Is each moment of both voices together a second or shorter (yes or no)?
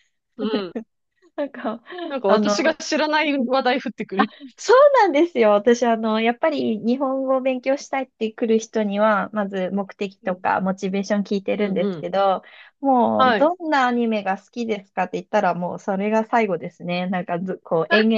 yes